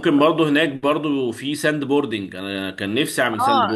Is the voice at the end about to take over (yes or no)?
yes